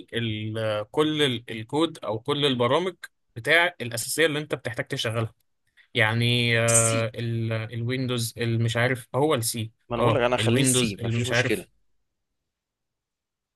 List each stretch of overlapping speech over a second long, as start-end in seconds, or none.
9.9-11.7